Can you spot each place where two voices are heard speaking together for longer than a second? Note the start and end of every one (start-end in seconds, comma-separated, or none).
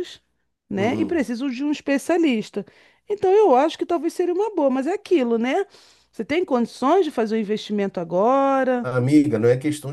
none